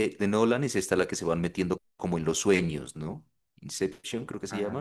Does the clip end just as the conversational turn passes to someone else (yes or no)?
no